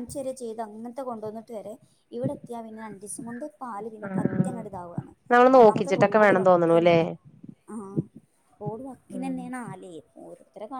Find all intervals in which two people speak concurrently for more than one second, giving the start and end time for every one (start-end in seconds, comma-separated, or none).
5.6-7.0